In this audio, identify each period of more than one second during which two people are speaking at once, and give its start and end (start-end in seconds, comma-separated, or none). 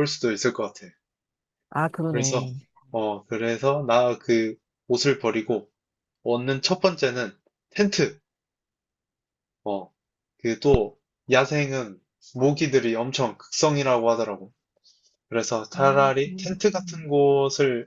15.7-17.1